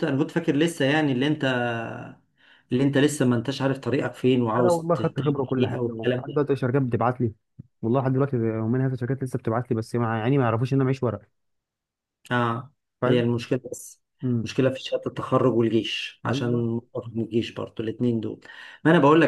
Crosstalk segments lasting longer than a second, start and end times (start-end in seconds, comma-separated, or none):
4.6-6.4